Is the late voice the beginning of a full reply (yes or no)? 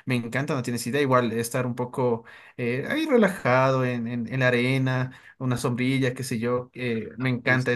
no